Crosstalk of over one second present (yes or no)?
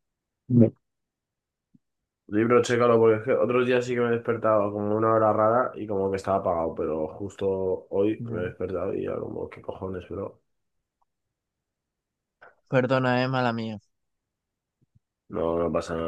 no